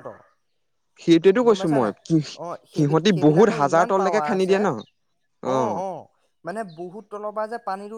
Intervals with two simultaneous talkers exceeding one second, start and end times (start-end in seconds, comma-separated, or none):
2.7-4.6